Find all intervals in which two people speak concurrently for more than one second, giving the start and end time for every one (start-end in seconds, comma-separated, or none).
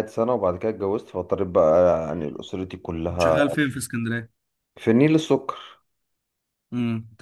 none